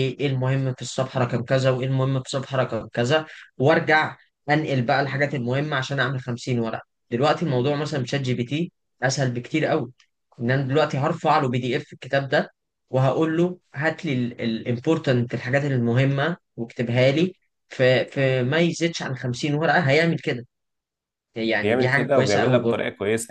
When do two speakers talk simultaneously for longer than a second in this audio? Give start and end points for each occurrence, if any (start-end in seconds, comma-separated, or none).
21.6-22.8